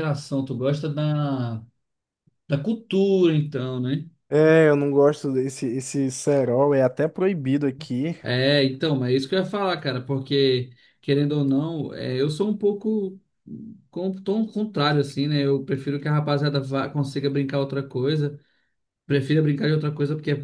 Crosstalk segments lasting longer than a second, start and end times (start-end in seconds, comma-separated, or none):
none